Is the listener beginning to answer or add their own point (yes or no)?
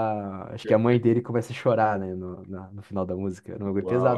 yes